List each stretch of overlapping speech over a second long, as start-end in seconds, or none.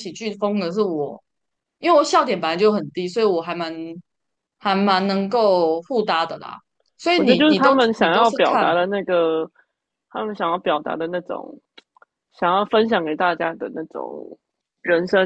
7.2-8.7